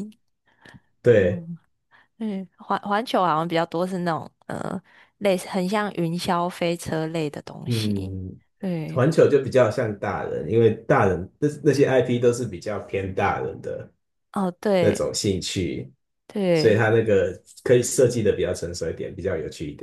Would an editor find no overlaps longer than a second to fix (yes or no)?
yes